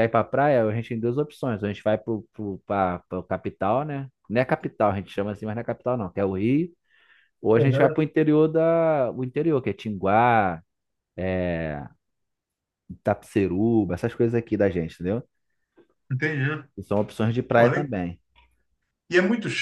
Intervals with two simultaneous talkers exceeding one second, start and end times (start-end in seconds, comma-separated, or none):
none